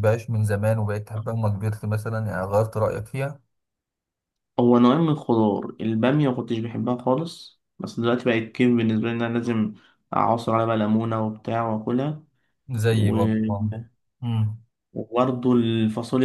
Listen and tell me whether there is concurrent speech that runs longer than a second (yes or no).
no